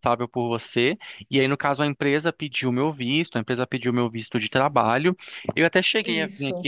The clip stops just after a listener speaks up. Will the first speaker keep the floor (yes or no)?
yes